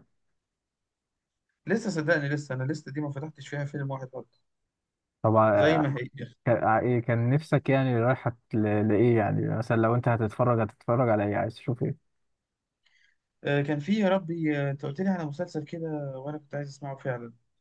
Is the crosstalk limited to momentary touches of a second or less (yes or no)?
yes